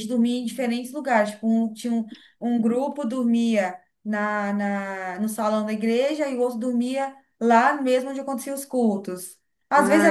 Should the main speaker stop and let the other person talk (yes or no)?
no